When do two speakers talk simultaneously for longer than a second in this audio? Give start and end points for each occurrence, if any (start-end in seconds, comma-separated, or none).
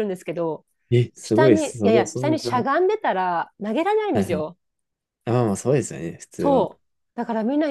1.2-2.7